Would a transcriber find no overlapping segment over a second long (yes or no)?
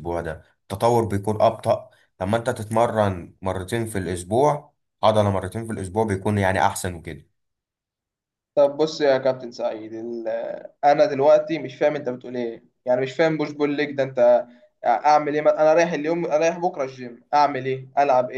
yes